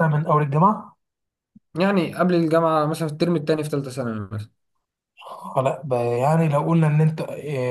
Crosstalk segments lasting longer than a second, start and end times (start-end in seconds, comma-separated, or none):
none